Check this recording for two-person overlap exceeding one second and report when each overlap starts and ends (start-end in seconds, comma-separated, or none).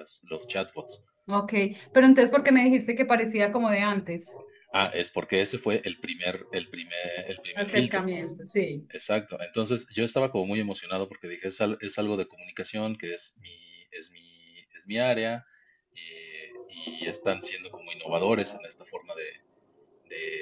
none